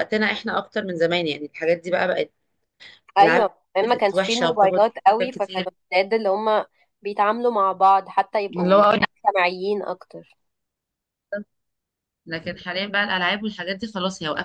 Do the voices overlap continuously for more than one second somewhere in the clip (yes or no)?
yes